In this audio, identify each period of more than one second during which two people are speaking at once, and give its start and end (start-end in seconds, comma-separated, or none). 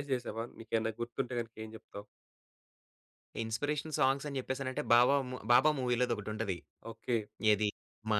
none